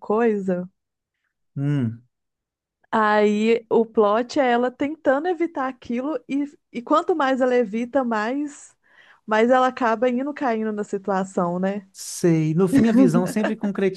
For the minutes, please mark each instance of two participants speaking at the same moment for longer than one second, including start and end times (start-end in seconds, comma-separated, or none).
none